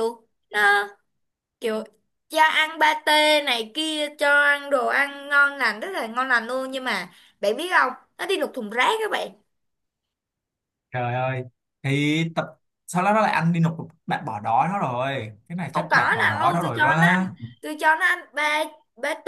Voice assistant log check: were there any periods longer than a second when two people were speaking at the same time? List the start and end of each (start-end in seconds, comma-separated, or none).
15.7-17.2